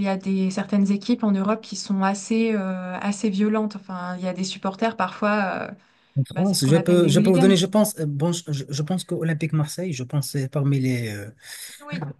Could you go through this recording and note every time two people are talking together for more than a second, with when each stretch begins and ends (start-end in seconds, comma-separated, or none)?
6.3-7.5